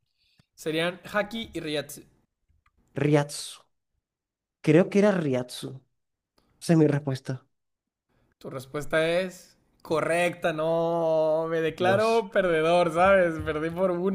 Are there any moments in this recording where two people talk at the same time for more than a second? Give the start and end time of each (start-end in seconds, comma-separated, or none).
none